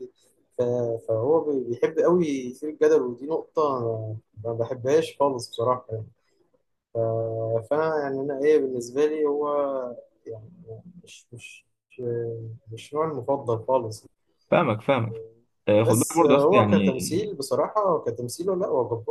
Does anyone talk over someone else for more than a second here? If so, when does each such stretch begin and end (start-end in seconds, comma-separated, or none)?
15.8-17.4